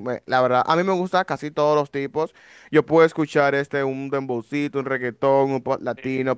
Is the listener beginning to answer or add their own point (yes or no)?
no